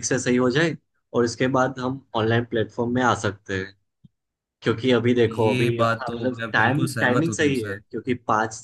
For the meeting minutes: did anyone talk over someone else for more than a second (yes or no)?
yes